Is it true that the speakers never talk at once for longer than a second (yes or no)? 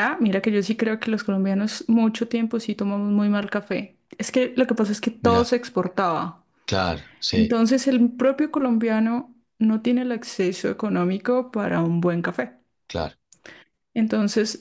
yes